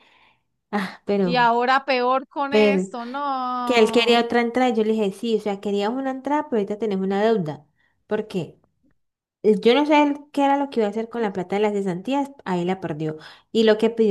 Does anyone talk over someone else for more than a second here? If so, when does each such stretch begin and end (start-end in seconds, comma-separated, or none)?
none